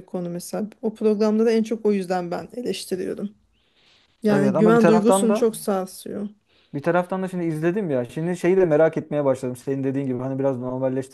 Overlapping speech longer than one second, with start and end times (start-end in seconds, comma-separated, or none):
4.3-5.6